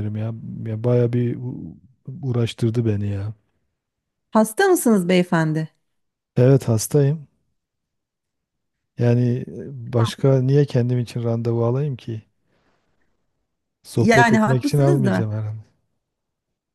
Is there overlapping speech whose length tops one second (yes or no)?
yes